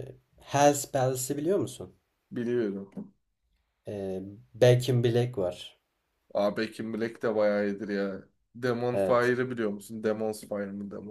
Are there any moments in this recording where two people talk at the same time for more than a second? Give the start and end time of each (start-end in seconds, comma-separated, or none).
none